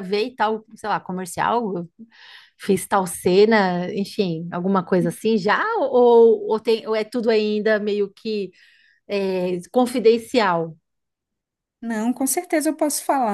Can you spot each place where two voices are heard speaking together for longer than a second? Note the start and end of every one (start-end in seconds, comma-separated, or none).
none